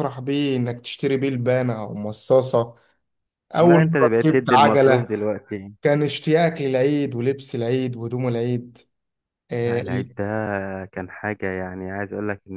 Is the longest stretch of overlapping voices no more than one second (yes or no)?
no